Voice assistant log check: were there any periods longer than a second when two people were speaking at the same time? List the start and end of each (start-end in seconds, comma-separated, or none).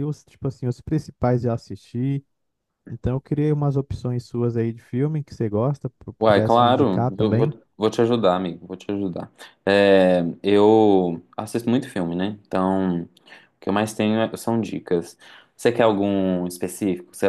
6.2-7.6